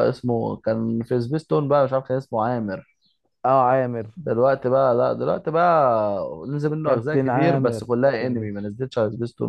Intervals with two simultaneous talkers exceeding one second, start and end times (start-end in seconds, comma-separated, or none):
6.8-8.5